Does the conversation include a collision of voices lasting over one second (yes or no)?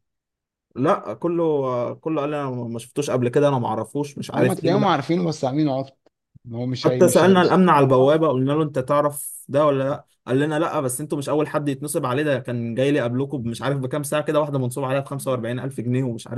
yes